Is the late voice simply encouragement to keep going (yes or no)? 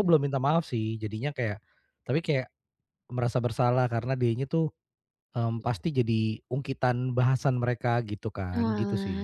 no